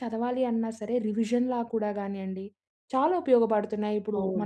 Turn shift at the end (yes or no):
yes